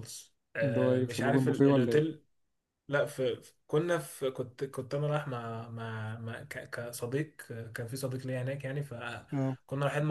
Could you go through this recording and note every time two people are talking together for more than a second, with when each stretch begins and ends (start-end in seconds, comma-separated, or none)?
0.6-2.0